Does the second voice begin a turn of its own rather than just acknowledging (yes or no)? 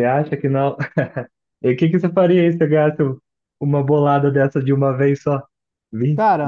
no